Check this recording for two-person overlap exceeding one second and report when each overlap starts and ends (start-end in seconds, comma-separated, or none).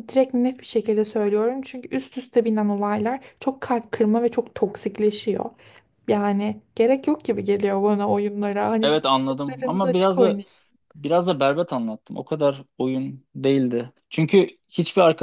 8.8-10.4